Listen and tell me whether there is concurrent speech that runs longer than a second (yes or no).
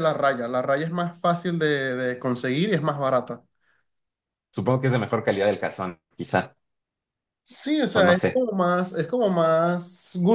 no